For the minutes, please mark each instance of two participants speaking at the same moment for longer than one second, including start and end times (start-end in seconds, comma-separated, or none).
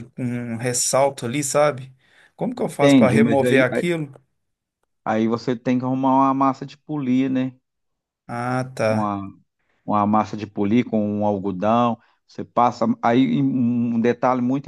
2.5-3.8